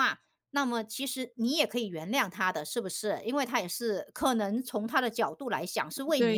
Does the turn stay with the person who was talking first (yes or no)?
no